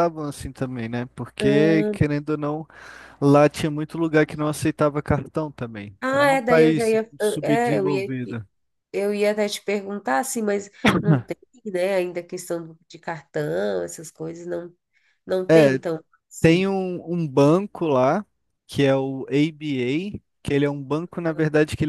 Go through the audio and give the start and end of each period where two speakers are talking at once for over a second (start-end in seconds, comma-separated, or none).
6.0-8.1